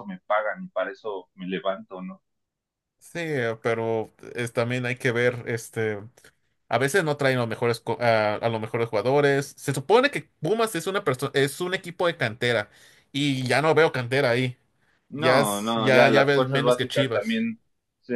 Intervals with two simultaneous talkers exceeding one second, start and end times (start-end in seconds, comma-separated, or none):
15.1-17.4